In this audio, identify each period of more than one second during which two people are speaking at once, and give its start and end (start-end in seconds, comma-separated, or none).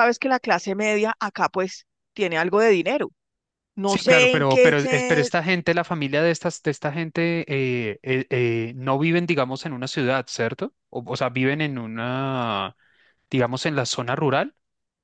3.8-5.3